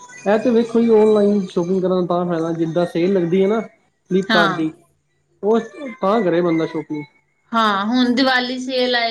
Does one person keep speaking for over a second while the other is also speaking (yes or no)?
no